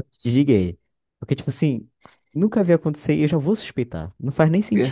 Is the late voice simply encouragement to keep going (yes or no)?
no